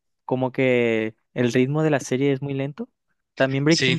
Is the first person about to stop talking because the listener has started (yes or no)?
no